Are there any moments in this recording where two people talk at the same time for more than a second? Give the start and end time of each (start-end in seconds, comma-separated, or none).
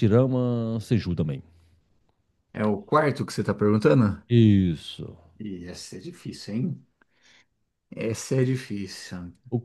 none